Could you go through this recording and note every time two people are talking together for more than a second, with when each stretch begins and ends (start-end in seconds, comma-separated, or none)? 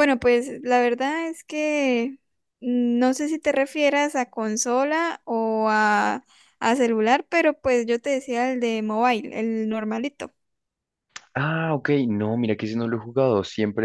none